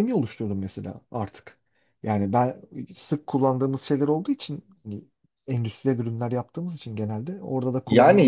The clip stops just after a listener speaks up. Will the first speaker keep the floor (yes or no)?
no